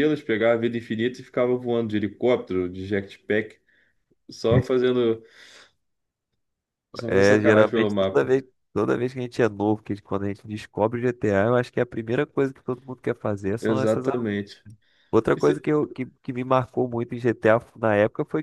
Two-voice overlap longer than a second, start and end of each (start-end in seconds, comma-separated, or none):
7.1-8.3